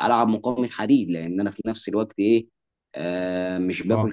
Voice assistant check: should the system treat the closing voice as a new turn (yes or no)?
no